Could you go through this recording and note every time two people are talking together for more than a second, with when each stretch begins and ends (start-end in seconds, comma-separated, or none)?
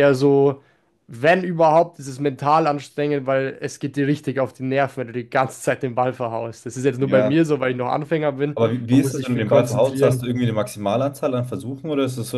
8.6-10.2